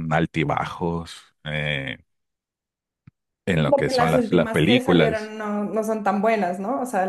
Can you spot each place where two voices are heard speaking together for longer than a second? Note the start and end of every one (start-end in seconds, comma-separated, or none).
3.6-5.3